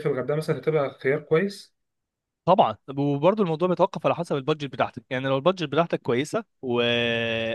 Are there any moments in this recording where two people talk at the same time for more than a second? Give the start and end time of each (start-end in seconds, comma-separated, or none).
none